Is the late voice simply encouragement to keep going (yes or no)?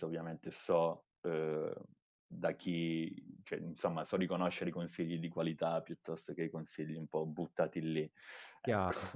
no